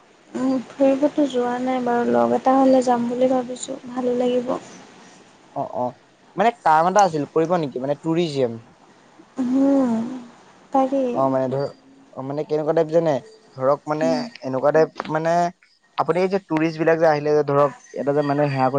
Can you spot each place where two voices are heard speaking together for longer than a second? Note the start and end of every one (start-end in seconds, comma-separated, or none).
none